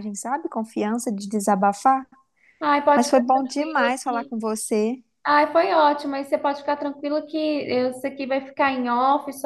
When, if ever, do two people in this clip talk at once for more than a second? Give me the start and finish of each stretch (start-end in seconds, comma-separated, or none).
2.9-4.3